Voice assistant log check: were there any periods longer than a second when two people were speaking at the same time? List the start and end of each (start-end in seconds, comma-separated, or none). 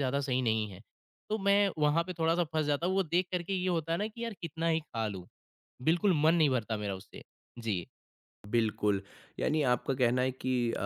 none